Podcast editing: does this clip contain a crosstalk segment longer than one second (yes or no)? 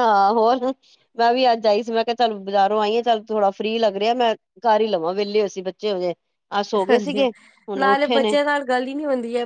no